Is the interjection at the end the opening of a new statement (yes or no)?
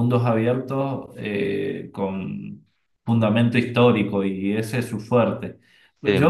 no